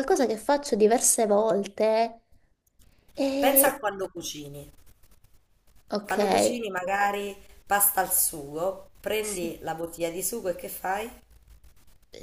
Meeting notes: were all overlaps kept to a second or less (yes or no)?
yes